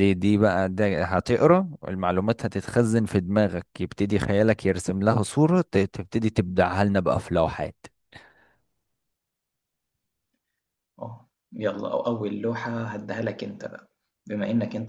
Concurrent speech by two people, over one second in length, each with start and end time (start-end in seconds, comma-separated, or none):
none